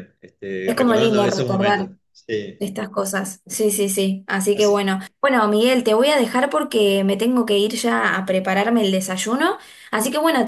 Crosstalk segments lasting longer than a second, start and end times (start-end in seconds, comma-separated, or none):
0.7-1.9